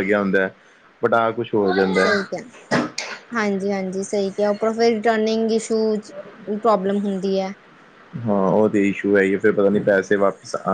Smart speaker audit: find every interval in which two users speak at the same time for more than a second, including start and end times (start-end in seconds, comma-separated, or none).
none